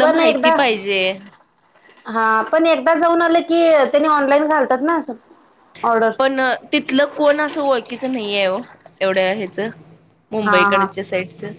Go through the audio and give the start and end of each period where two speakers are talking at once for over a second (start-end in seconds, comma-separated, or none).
none